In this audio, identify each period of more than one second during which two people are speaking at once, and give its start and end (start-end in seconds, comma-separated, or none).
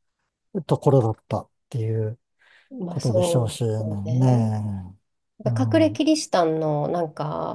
2.9-4.4